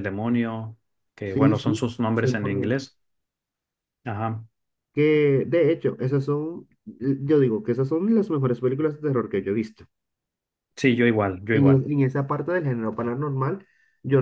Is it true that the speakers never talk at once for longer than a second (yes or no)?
no